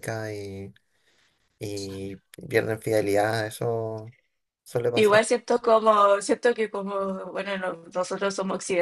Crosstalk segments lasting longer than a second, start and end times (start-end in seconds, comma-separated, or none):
none